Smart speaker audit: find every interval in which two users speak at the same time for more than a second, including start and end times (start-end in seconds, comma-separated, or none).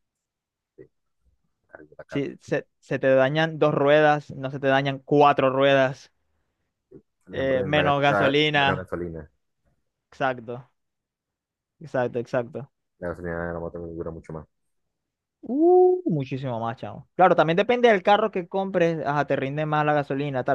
7.3-8.9